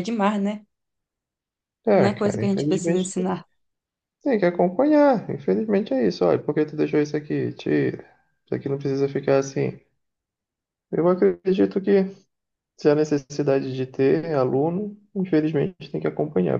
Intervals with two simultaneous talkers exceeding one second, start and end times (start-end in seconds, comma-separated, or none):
1.9-3.4